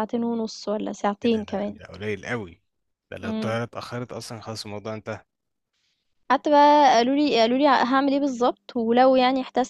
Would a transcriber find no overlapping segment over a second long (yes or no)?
yes